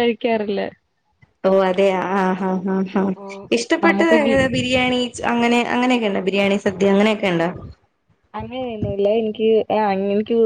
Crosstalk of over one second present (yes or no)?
no